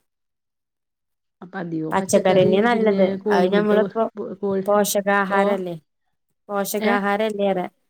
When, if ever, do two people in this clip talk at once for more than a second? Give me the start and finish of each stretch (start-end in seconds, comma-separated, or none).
1.9-3.7